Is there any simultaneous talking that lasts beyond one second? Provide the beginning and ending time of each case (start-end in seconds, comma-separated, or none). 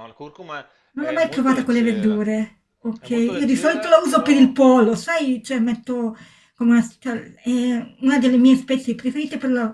1.0-2.2, 3.0-4.6